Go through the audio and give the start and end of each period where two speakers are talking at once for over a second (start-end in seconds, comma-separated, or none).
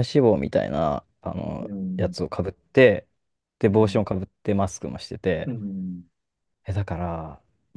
none